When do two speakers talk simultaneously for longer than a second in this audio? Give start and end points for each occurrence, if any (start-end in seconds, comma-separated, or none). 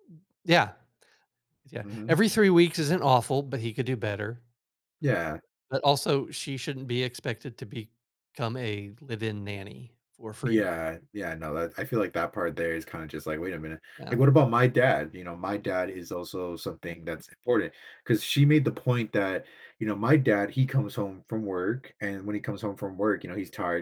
none